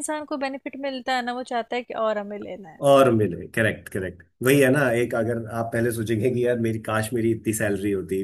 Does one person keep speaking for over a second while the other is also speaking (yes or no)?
no